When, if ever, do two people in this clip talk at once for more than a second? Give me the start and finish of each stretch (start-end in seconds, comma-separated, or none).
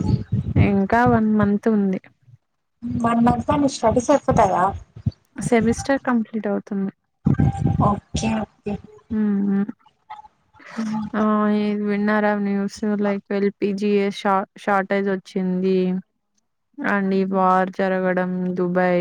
none